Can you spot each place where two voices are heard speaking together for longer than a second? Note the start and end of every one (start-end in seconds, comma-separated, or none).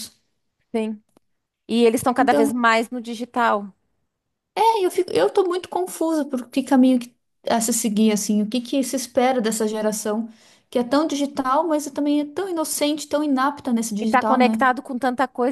none